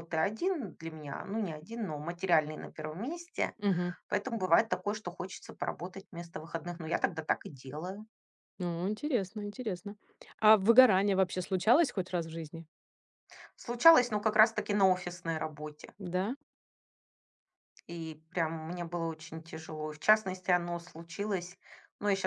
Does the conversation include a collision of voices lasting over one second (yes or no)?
no